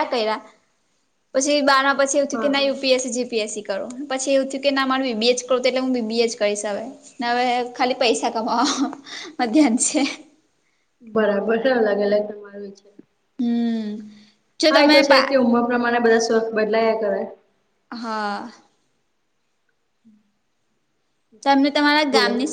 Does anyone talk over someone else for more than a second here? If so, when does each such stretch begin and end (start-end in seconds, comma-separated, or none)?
none